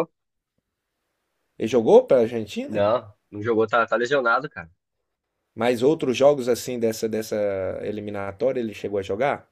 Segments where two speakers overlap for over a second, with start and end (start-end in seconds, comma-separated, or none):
none